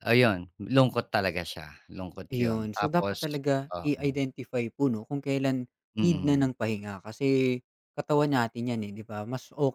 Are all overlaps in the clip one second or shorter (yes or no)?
no